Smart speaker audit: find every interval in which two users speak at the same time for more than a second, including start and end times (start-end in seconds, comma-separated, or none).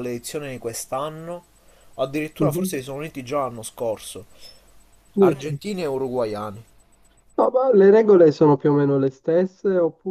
none